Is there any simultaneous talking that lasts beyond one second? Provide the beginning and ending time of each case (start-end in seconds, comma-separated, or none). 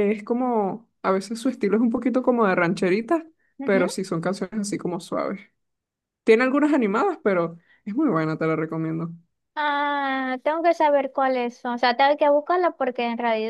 none